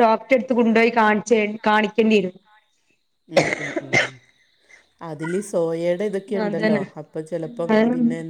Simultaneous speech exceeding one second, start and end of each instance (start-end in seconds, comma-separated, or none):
none